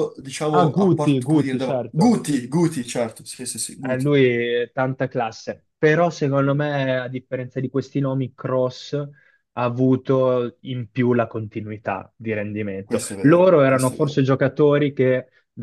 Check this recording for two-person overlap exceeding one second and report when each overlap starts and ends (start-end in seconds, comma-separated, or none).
0.5-2.2, 12.8-14.2